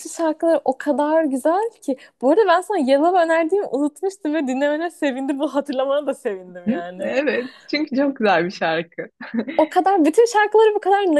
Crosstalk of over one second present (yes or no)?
no